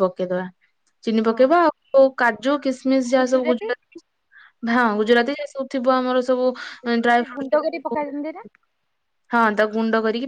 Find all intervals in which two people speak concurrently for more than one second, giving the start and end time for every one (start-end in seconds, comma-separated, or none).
none